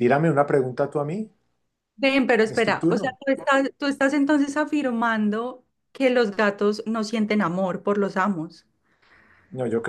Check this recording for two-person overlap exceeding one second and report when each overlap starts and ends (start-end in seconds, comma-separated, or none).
none